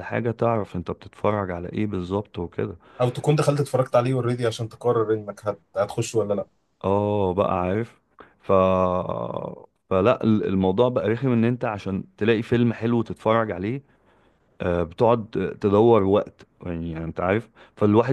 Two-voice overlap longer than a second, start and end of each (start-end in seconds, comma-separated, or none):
none